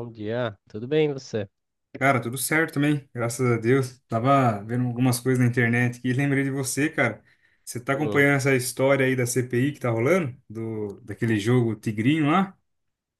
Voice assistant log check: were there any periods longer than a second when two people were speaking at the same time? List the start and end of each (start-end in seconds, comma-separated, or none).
none